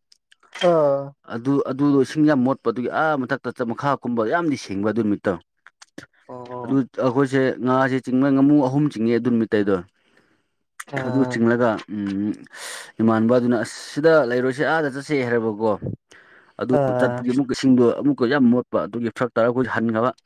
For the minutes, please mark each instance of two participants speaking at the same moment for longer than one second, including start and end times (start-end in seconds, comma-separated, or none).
none